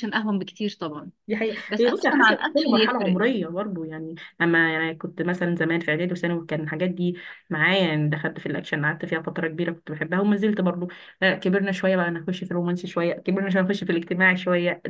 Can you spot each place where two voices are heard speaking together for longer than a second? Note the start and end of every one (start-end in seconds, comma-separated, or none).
1.7-3.2